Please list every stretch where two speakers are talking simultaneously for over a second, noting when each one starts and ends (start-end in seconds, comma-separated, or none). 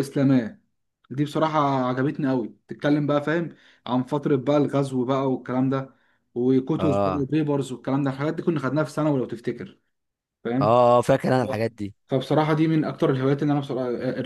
none